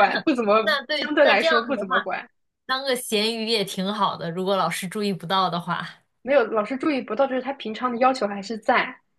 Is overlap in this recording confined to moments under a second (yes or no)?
no